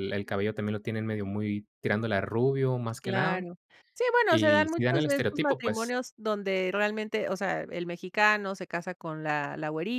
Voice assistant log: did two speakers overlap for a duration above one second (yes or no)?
yes